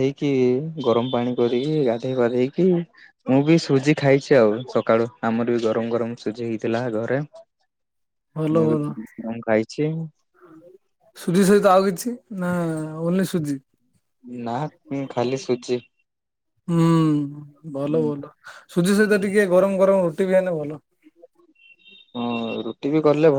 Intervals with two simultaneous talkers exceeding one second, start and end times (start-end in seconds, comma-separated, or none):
none